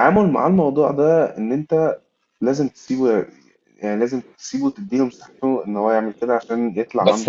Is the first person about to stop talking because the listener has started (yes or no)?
yes